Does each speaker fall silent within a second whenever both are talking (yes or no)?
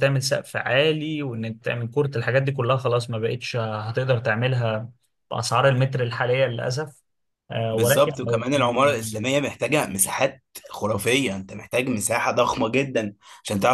no